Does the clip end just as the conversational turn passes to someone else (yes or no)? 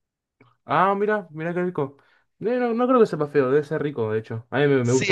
yes